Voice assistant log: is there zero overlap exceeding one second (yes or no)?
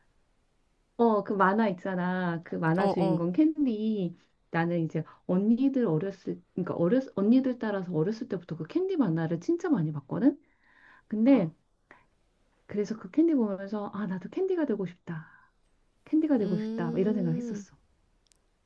no